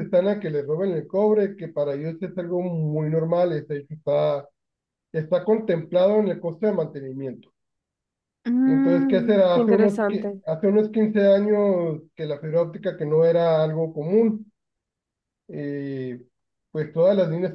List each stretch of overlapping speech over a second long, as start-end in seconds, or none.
8.6-10.4